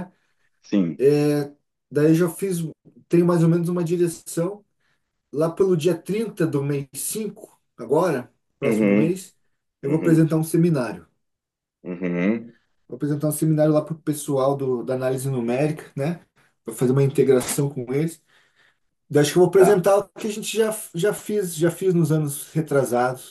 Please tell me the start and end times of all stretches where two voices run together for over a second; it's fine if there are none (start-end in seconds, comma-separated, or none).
none